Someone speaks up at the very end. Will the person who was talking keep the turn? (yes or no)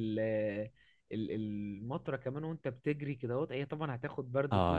no